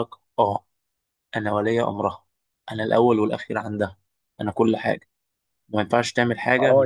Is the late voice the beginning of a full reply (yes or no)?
yes